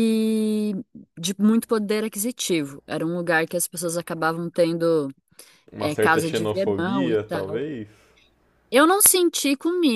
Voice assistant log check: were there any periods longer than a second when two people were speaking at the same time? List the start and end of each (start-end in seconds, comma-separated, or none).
5.8-7.6